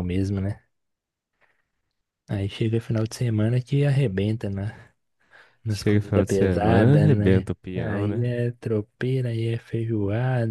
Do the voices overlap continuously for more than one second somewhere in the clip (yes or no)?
yes